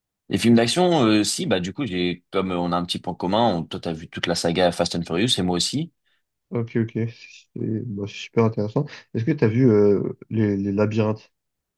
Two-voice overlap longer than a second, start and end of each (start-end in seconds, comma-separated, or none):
none